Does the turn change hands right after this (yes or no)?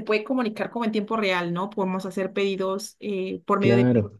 no